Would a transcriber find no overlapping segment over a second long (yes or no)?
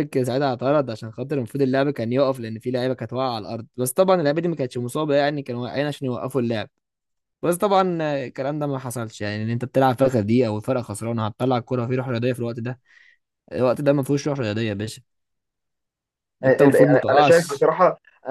no